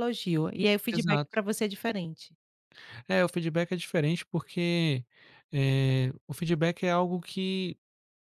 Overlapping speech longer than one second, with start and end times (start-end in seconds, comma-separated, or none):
none